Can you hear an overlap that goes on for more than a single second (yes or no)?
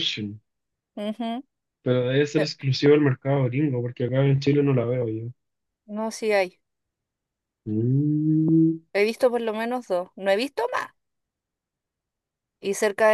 no